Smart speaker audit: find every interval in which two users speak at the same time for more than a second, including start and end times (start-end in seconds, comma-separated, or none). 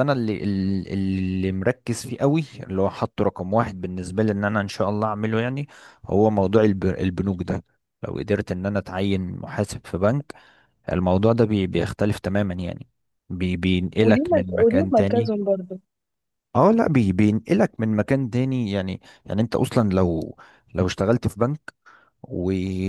14.0-15.3